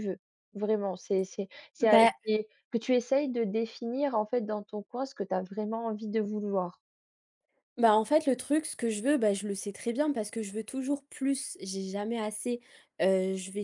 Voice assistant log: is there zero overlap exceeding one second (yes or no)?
yes